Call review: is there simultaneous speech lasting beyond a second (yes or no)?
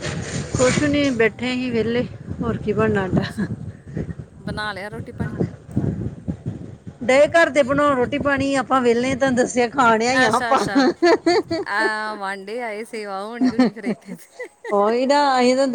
no